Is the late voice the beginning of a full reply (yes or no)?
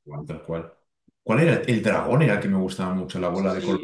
yes